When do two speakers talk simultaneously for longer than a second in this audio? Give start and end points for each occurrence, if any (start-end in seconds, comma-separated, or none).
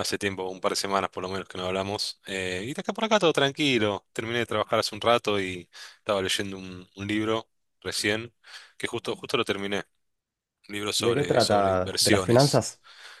11.0-12.6